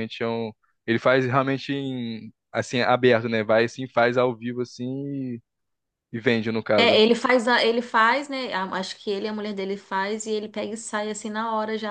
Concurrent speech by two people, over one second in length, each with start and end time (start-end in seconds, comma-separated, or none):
none